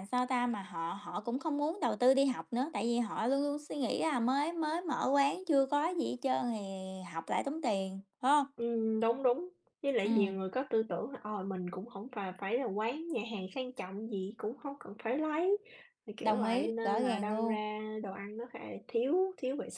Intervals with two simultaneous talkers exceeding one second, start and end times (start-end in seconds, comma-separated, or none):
16.2-17.6